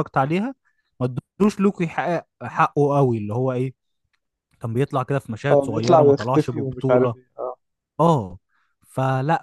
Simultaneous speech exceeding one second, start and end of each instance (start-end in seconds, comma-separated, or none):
5.5-7.1